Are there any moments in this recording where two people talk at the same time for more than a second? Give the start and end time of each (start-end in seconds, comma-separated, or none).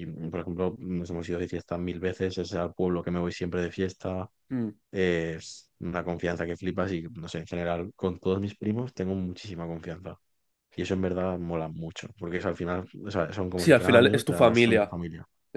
13.6-14.9